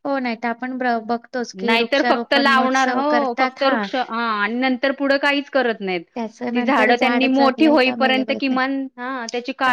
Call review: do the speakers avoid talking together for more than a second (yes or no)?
no